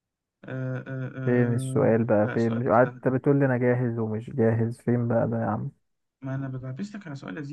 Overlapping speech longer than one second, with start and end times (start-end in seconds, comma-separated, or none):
1.2-3.1